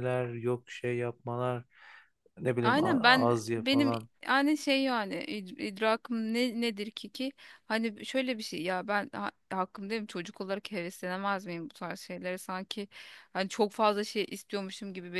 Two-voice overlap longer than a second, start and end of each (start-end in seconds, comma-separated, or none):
2.6-4.1